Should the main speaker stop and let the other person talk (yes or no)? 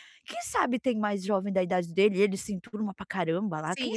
yes